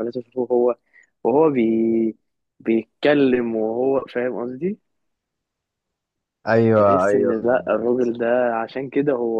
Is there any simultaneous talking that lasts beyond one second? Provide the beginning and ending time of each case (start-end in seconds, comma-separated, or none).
6.7-8.1